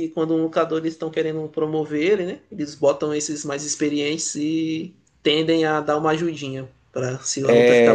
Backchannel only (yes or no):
no